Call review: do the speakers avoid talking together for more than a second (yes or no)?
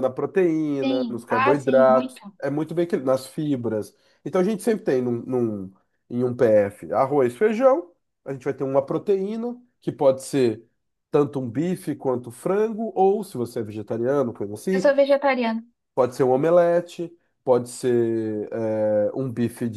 no